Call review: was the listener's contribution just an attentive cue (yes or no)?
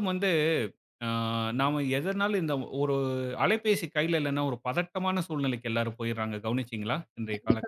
no